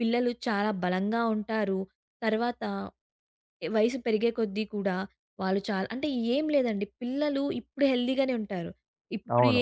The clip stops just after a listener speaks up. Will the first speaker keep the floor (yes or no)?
yes